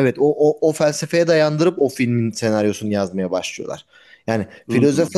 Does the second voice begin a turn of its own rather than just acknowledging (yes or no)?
no